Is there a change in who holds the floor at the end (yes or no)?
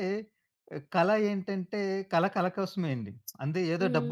no